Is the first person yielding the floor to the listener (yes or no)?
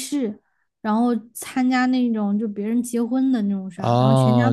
yes